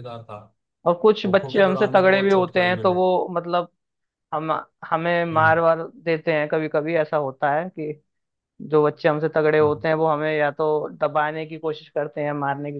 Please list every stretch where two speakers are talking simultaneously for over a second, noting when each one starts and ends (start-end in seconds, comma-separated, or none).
1.2-3.0